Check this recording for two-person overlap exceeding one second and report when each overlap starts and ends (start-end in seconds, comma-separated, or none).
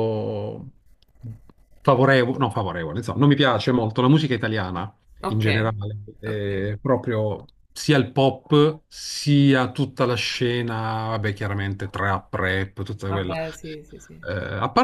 none